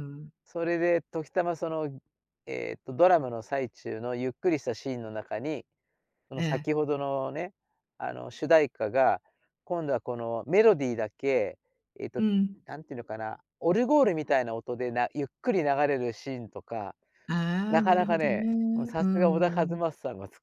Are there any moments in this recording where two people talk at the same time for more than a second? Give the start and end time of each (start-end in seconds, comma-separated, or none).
17.7-19.8